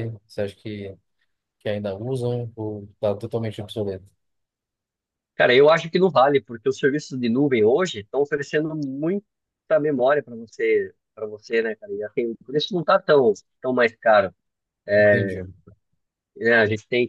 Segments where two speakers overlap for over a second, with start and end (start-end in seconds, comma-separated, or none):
none